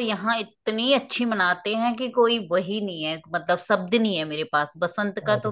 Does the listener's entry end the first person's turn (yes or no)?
no